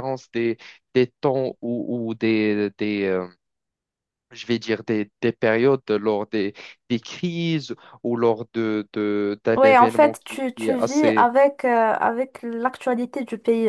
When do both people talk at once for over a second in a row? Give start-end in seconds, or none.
9.6-11.3